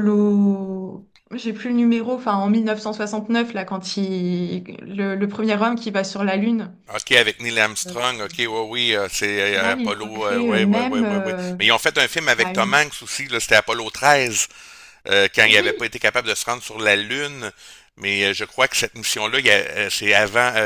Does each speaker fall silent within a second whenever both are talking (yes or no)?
no